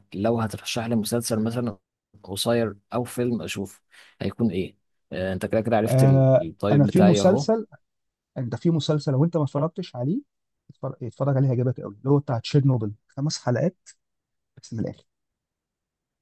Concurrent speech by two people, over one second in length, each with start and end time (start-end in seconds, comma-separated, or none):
5.9-7.5